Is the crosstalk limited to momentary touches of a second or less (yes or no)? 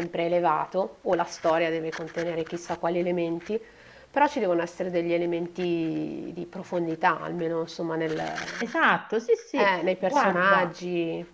no